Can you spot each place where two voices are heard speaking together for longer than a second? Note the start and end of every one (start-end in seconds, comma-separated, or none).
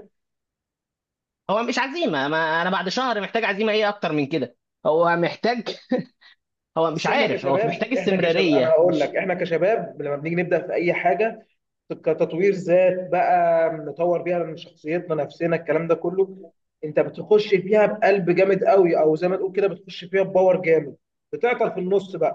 6.9-9.2